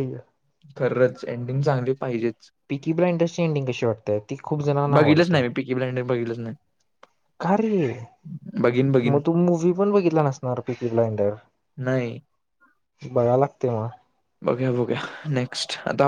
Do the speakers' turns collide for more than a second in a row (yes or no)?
no